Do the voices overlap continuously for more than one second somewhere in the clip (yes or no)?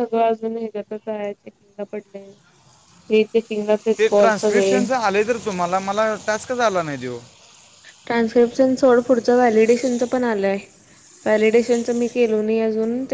no